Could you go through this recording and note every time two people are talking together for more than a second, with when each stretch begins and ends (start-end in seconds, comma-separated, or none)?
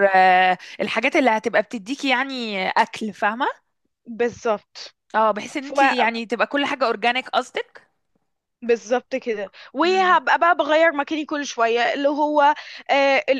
none